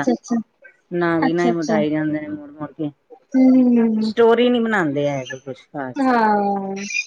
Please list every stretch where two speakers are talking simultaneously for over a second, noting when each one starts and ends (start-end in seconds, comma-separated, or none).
none